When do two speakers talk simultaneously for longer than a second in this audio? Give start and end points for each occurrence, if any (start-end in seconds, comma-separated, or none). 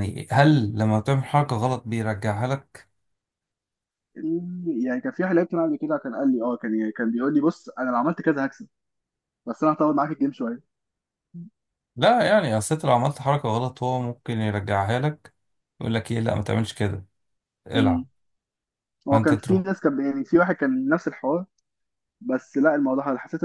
none